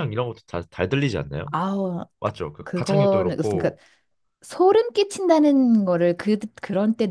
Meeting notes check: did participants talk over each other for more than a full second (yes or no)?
yes